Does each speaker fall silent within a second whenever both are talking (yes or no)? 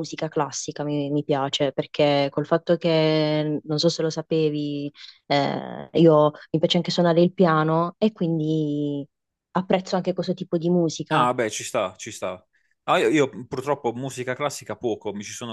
yes